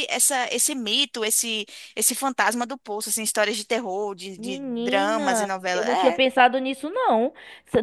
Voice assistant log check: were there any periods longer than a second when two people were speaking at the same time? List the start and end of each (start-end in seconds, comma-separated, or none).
4.3-6.2